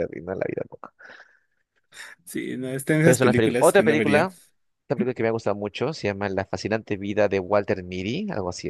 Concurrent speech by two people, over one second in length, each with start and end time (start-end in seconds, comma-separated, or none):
3.0-4.3